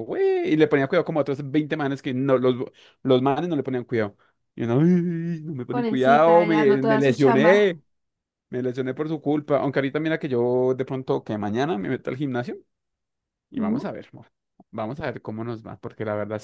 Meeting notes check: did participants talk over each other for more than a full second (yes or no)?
yes